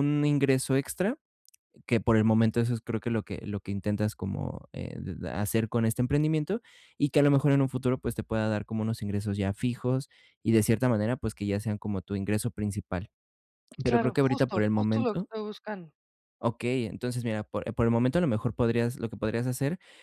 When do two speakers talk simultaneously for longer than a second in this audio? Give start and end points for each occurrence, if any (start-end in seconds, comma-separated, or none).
13.8-15.3